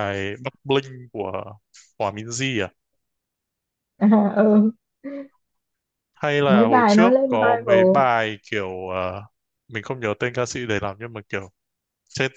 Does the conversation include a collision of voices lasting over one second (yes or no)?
yes